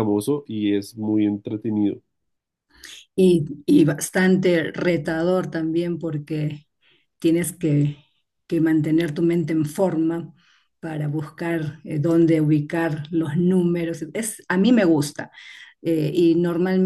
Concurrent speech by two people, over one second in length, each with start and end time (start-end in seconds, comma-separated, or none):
none